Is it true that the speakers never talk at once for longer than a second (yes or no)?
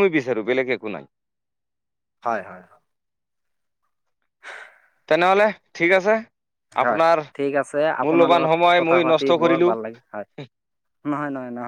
no